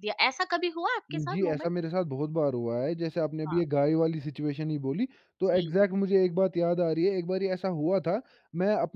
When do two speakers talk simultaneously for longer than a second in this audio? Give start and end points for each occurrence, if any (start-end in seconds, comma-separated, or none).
none